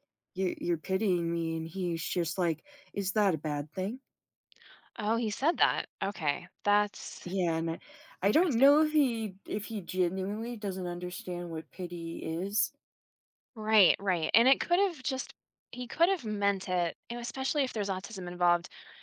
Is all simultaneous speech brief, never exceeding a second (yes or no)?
yes